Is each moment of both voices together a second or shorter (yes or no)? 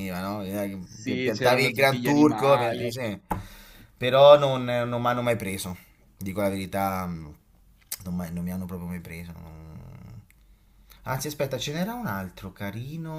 no